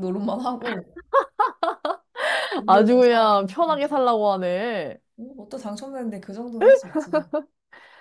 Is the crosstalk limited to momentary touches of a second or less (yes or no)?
no